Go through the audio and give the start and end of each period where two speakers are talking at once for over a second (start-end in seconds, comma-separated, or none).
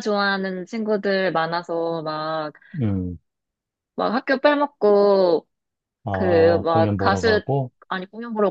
6.1-7.4